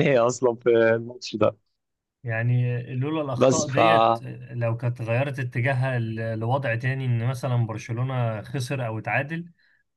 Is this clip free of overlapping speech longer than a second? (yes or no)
yes